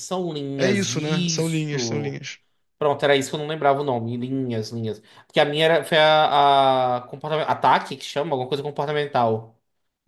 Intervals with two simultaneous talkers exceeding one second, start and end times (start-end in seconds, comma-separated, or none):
0.6-2.2